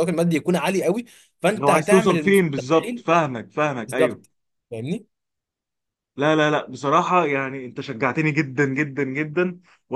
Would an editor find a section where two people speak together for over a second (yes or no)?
yes